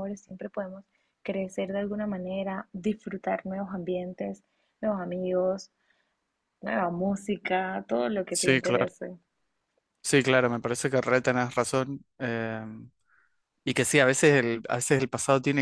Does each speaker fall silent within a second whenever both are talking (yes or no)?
yes